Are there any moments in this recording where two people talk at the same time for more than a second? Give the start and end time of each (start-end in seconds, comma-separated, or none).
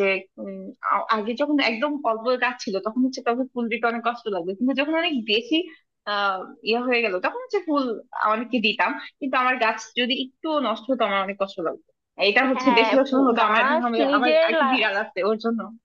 12.5-14.8